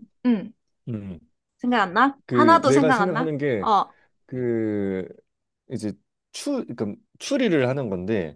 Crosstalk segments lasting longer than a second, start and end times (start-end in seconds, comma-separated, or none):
2.3-3.7